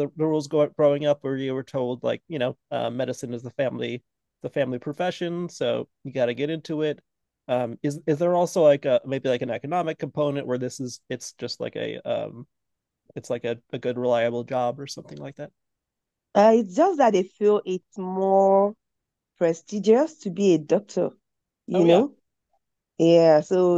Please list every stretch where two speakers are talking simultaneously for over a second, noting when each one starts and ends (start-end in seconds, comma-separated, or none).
none